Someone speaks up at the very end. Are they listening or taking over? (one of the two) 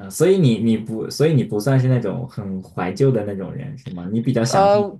taking over